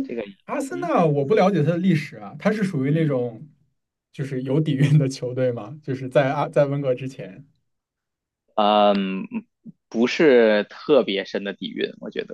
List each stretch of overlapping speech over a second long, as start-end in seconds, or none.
none